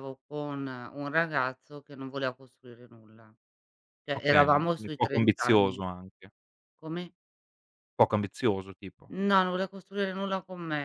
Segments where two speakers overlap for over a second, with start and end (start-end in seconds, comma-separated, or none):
4.2-5.8